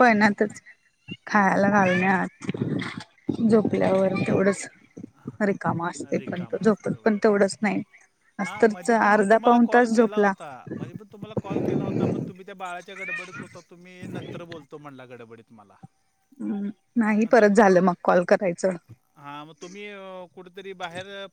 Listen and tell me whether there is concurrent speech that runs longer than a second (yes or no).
yes